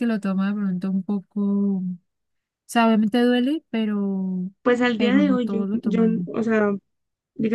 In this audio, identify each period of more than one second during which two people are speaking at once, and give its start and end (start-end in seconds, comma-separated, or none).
5.0-6.3